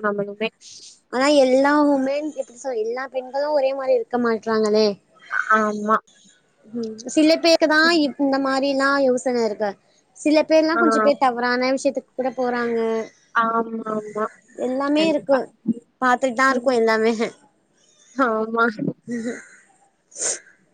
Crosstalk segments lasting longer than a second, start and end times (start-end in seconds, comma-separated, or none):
none